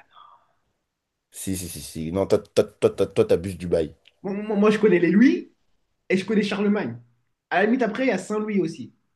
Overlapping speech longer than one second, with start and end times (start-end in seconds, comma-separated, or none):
none